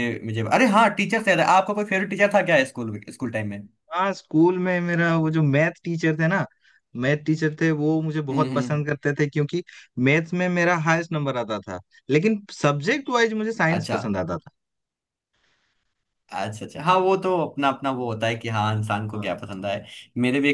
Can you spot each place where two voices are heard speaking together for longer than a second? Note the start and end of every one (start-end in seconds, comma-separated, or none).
none